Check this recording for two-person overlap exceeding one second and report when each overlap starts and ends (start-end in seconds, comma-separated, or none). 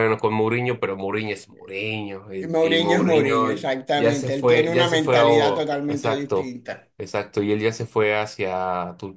2.4-6.5